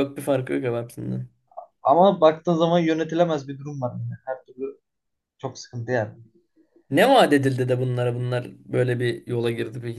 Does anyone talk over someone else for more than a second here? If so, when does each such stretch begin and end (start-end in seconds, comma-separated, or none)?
none